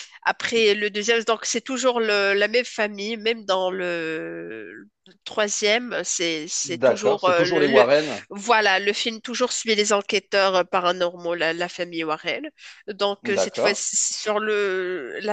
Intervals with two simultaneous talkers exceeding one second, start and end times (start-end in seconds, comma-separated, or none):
6.7-7.9